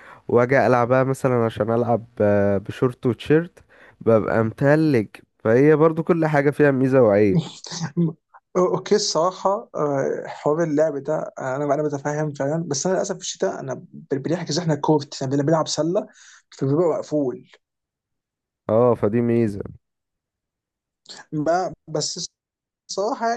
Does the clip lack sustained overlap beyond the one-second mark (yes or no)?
yes